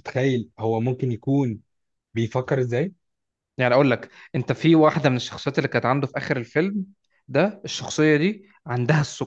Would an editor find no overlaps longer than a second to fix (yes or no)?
yes